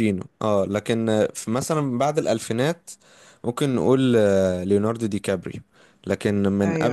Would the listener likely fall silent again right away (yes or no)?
yes